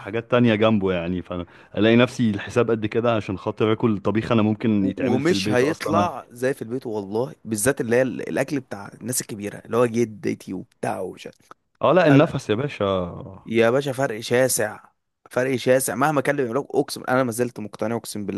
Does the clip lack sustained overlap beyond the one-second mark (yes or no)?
no